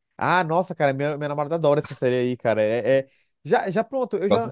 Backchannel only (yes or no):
yes